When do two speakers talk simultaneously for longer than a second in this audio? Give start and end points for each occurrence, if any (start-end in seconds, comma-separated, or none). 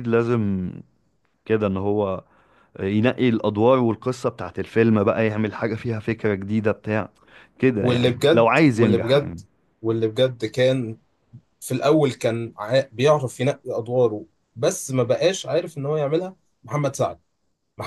7.8-9.4